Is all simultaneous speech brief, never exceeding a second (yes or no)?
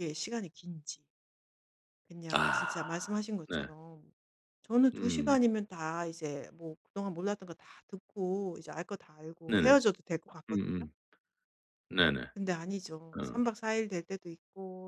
yes